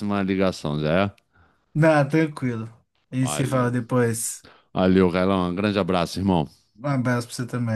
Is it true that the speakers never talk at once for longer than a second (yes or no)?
yes